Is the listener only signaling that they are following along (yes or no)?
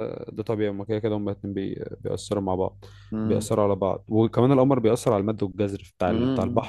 no